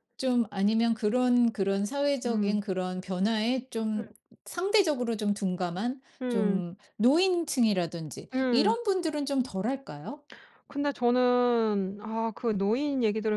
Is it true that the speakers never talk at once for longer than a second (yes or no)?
yes